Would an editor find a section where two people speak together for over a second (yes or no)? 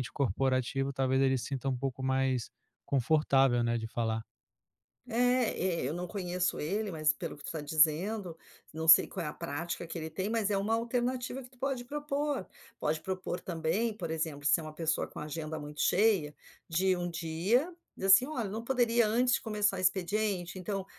no